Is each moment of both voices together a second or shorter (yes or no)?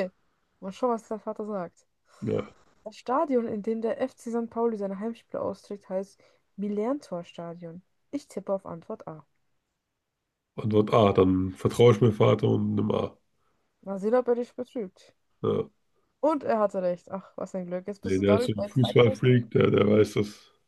no